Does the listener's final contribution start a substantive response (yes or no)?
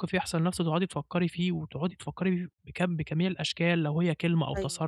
no